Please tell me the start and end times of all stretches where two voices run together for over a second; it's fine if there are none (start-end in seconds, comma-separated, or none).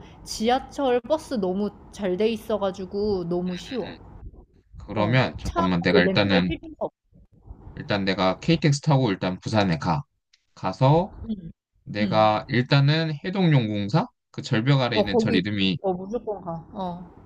5.0-6.5